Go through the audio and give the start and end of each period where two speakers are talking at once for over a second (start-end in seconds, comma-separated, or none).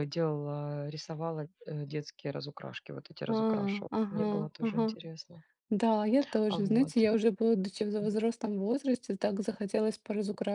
3.3-5.0